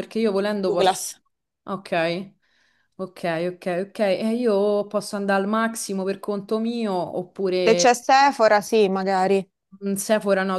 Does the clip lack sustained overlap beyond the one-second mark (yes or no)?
yes